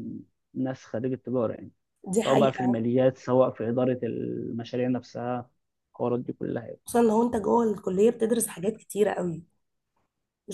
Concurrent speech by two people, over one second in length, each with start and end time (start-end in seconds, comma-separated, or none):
none